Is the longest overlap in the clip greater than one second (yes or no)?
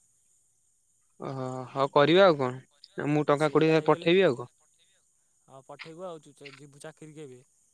no